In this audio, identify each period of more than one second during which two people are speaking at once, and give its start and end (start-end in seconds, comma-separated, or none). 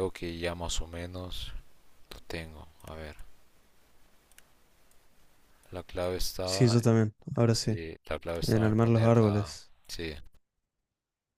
8.4-9.7